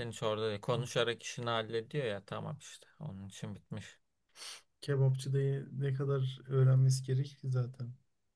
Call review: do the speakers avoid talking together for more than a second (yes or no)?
yes